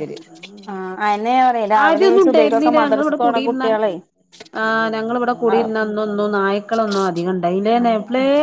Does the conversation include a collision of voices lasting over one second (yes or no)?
yes